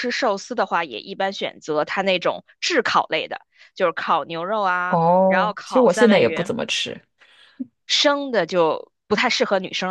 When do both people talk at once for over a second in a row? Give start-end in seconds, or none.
4.9-6.5